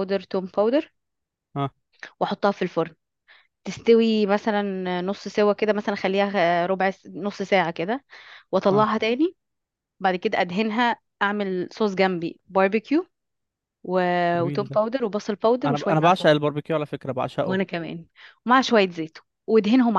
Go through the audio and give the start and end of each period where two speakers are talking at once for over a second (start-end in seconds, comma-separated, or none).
none